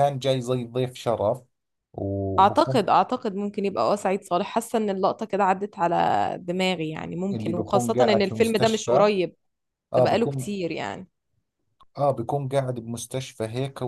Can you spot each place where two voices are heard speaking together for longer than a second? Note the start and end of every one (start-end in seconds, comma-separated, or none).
7.3-9.1